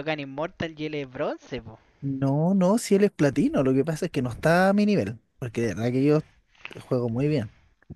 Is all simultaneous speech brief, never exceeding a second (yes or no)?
yes